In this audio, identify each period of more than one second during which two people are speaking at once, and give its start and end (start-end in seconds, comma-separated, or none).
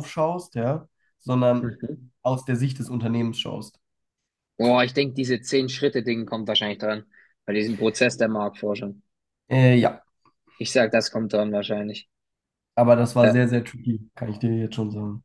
none